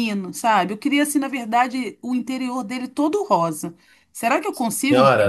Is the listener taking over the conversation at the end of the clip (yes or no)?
yes